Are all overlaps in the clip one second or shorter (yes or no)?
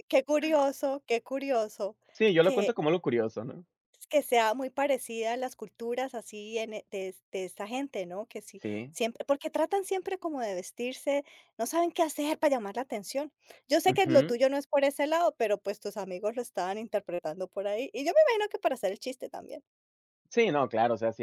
yes